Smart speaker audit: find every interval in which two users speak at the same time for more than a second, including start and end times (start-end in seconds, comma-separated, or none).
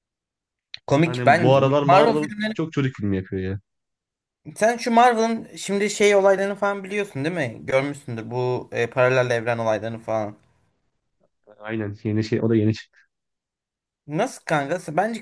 1.0-2.5